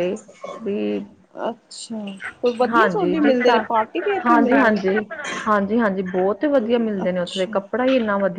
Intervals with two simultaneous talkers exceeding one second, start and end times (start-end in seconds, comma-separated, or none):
2.7-4.8